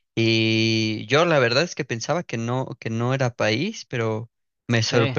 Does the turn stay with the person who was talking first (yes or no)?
yes